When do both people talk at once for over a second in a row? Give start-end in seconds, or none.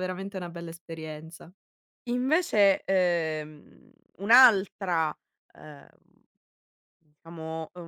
none